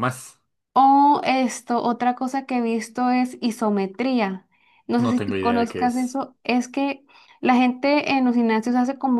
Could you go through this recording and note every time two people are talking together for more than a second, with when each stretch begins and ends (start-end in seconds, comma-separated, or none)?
5.0-6.2